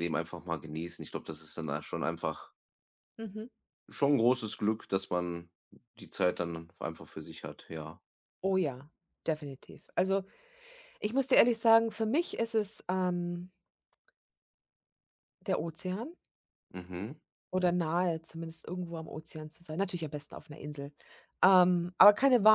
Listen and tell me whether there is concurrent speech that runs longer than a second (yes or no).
no